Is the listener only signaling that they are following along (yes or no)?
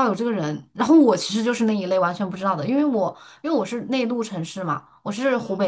yes